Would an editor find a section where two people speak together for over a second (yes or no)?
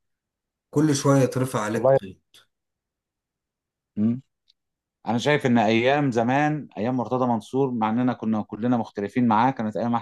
no